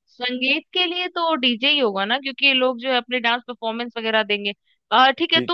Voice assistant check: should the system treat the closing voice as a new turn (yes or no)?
no